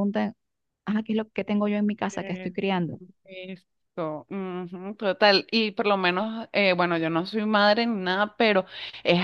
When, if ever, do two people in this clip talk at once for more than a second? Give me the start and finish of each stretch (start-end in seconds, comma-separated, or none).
none